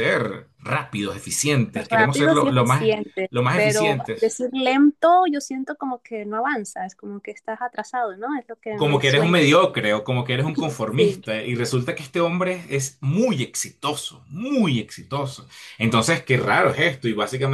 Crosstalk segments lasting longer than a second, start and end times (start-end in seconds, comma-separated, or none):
1.7-4.3